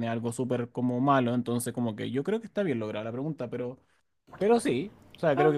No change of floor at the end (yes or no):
yes